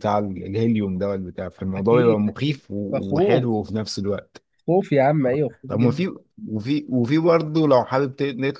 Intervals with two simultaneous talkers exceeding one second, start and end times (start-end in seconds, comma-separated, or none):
1.8-3.6